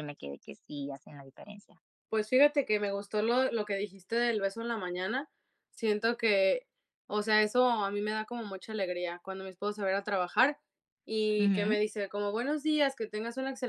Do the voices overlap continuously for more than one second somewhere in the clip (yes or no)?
no